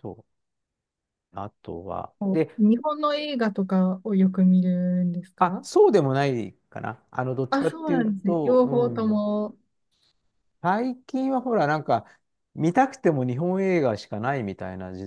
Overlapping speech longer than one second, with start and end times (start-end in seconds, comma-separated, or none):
7.5-9.2